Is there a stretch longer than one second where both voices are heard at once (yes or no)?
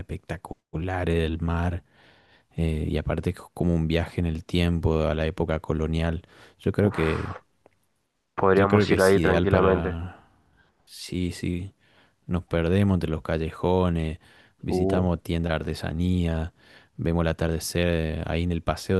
yes